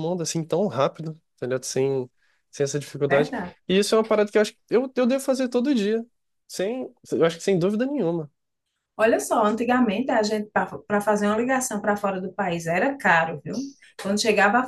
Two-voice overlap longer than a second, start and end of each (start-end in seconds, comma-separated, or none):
none